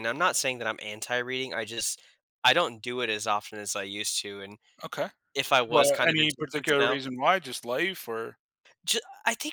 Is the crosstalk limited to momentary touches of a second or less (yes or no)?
no